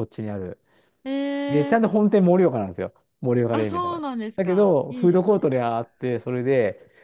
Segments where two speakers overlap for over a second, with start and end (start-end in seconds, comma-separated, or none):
3.5-5.5